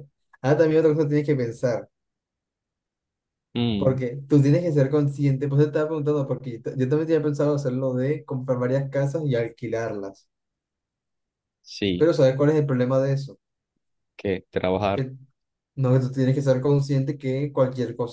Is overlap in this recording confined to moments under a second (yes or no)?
yes